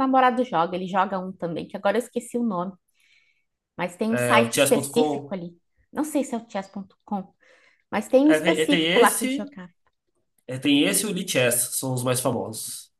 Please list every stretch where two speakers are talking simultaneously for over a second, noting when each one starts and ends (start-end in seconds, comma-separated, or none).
4.1-5.4, 8.2-9.5